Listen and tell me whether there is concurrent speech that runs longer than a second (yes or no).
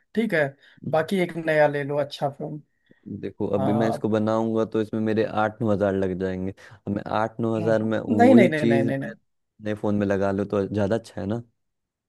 yes